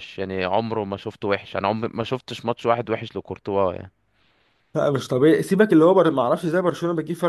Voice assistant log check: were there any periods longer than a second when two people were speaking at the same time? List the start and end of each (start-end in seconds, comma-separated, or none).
none